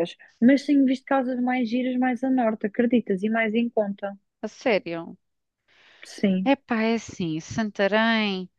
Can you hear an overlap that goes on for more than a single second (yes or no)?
no